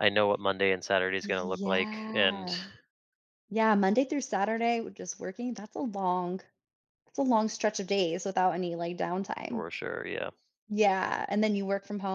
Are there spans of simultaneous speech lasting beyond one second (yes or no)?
yes